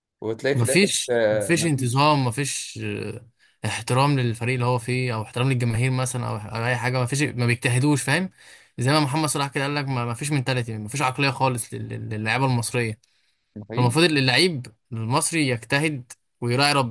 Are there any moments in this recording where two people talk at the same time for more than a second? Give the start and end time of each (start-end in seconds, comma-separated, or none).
0.5-2.1